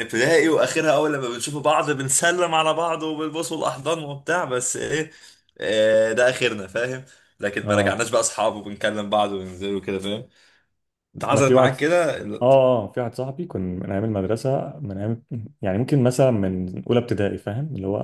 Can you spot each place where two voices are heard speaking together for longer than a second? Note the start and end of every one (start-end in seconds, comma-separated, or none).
none